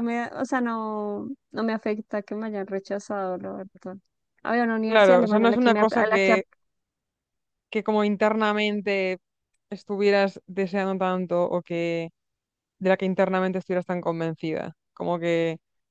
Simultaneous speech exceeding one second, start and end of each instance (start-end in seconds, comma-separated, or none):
4.9-6.4